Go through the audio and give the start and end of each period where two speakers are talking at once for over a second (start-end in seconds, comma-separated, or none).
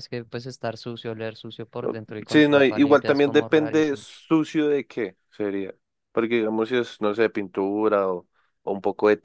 2.3-4.1